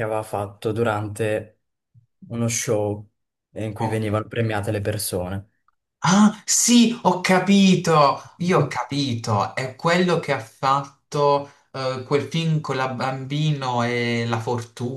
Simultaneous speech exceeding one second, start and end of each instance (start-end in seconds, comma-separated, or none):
none